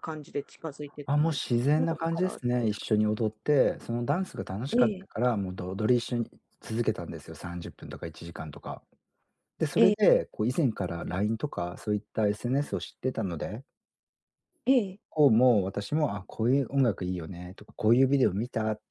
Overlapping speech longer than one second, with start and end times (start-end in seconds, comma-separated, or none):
1.1-2.9